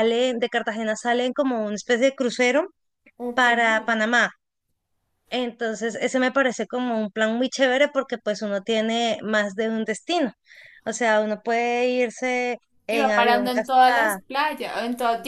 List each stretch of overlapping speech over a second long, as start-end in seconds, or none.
12.9-14.2